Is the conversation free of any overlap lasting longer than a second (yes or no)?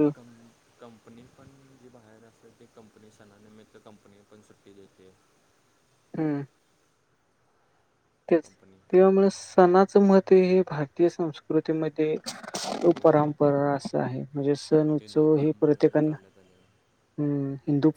no